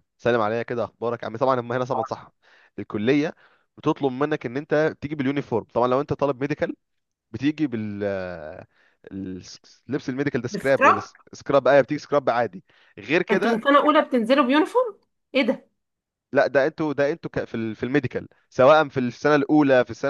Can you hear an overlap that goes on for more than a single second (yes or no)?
no